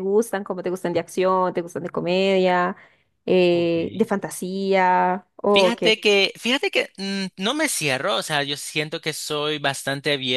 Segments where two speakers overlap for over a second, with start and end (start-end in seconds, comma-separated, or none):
none